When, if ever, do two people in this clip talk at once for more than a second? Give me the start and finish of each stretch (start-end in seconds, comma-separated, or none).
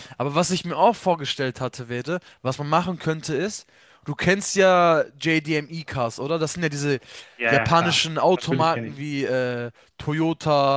7.5-9.0